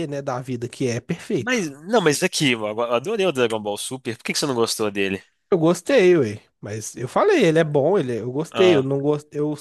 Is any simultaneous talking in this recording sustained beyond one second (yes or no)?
no